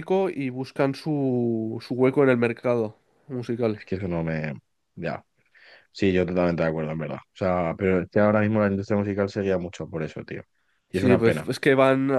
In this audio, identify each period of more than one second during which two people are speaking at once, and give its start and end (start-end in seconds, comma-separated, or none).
none